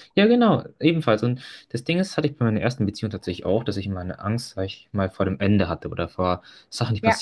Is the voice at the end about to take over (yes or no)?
no